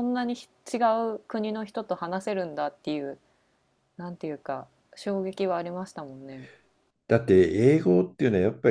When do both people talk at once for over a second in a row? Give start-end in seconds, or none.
none